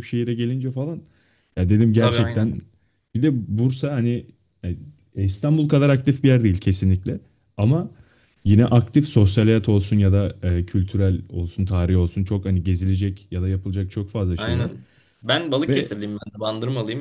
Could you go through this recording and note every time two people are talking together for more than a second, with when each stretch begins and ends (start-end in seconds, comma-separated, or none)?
none